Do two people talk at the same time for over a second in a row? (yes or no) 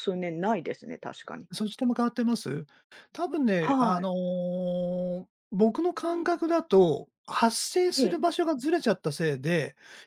no